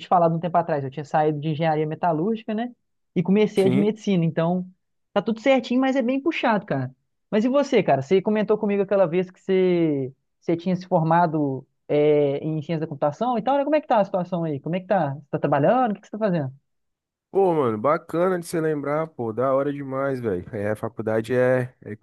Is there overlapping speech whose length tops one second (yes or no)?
no